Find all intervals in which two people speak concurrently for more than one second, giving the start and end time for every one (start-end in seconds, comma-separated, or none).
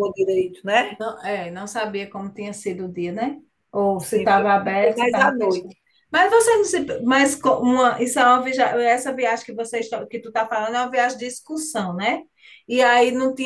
4.0-5.7